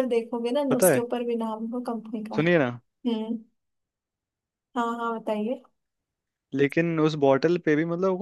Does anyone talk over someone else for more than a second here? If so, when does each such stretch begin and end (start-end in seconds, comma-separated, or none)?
none